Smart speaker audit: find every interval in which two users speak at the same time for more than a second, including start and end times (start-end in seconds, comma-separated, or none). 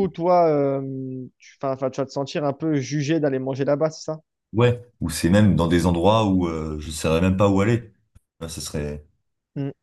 none